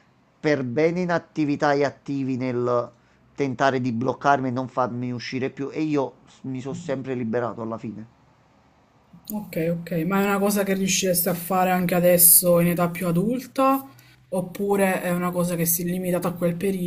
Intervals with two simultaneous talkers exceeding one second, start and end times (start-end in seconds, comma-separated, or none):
none